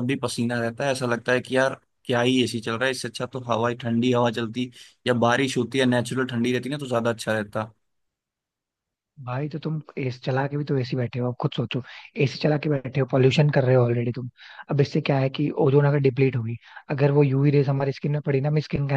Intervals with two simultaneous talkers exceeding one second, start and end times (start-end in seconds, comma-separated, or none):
none